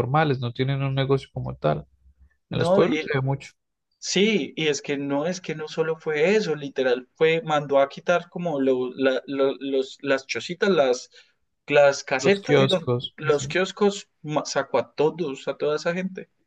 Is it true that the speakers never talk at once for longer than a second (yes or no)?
no